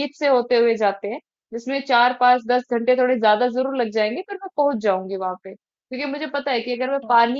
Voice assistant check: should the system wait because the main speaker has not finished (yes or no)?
yes